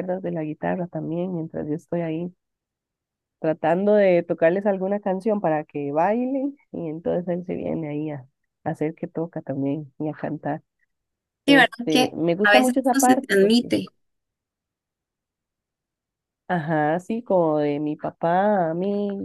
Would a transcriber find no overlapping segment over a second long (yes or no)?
no